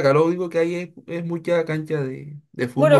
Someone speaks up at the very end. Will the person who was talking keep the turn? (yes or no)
no